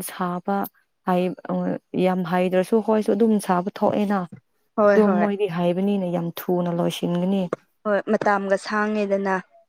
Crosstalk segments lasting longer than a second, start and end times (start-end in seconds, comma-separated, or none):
none